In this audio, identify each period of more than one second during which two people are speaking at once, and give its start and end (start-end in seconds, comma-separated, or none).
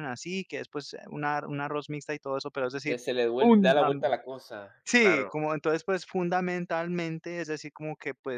none